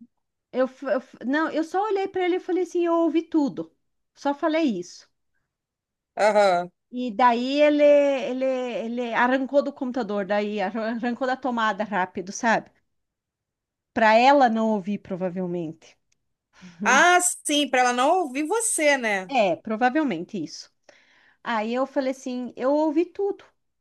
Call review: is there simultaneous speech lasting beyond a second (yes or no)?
no